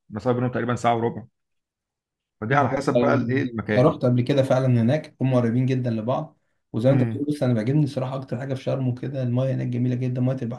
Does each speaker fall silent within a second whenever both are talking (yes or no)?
no